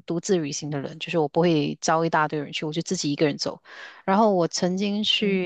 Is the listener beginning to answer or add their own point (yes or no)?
no